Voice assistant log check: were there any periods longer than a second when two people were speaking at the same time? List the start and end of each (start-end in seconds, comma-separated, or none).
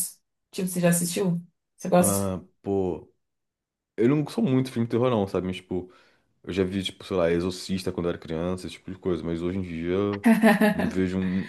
none